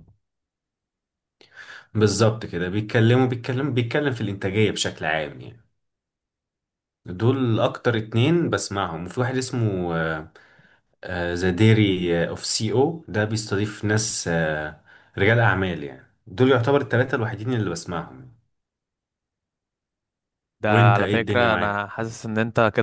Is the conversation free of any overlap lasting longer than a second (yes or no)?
no